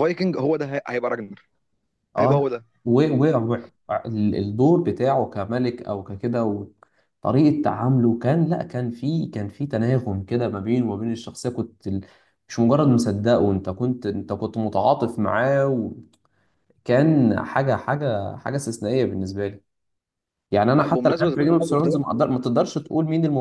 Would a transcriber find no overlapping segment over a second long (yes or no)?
no